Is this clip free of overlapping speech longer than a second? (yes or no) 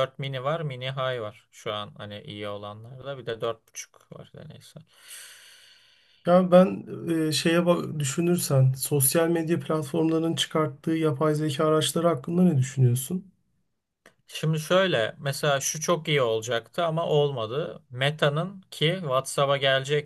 yes